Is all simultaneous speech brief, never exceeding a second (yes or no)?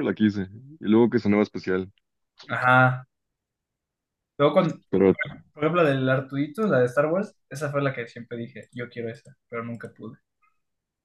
yes